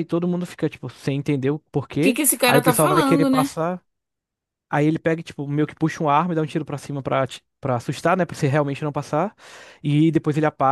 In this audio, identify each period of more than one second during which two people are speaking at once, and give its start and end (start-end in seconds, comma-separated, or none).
2.0-3.5